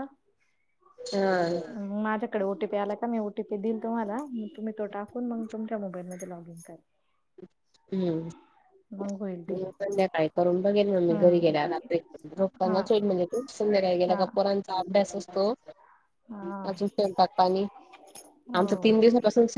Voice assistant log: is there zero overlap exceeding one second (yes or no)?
yes